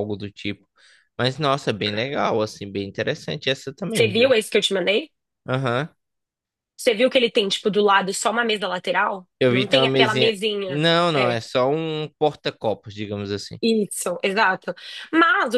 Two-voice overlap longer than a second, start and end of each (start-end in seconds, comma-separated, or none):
9.4-11.4